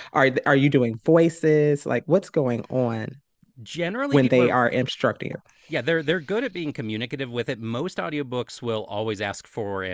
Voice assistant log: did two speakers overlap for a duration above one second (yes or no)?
no